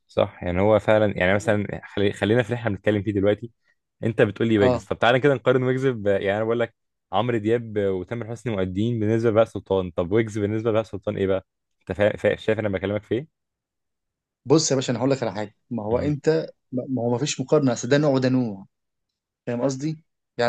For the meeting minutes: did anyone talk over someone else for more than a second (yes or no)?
no